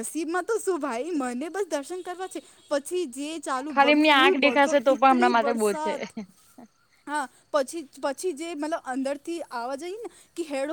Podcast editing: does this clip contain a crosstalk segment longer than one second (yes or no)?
yes